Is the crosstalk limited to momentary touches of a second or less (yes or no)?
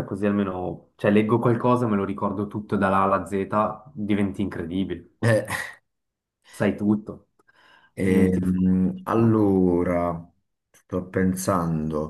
no